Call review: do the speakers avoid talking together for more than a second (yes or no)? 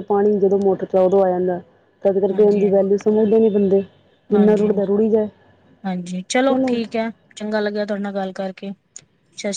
yes